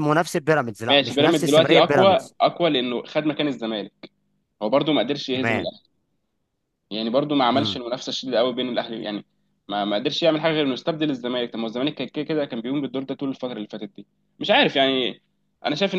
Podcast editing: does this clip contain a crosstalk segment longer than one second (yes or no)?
yes